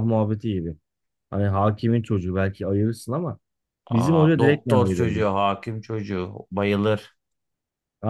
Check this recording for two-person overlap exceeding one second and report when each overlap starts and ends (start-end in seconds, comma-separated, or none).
3.9-5.2